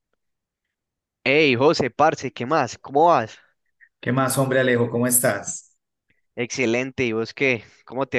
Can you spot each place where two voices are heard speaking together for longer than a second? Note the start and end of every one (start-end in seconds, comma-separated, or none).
none